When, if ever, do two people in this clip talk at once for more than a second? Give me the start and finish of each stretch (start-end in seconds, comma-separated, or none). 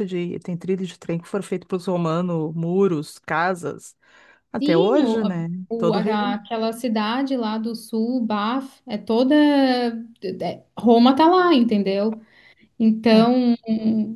4.6-6.4